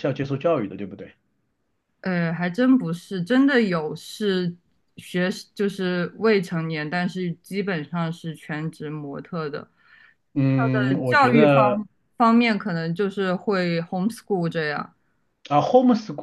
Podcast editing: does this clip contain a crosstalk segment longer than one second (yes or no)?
yes